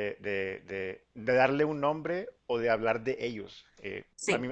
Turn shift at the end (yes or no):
no